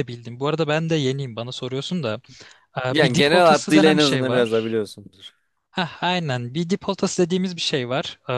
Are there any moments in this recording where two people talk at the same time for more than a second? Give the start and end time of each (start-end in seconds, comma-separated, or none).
2.9-4.8